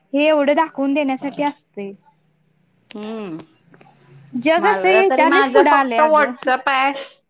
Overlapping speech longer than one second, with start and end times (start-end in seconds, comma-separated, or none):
4.6-6.3